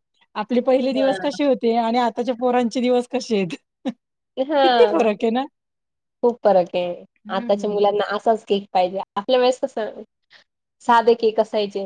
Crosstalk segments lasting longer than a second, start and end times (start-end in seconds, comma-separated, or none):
none